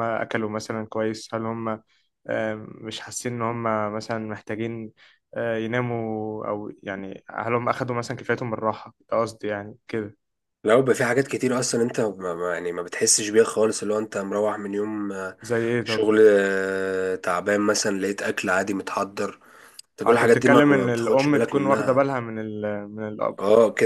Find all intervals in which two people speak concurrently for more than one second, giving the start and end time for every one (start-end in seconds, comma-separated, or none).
20.0-22.1